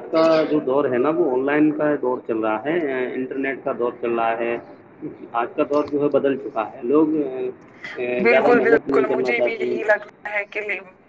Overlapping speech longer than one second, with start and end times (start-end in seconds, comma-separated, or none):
8.3-9.8